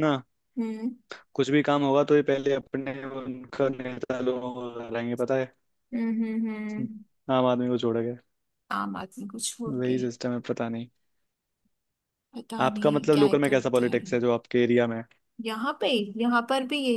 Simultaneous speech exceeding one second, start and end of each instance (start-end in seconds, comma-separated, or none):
12.6-14.2